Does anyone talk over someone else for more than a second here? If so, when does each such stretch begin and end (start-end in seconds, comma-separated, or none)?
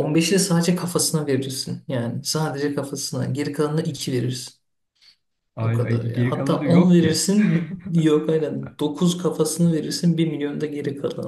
5.6-7.3